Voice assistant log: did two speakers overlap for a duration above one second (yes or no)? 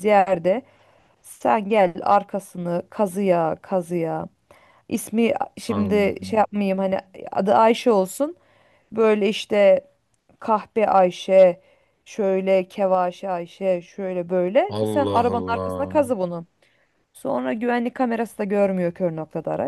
yes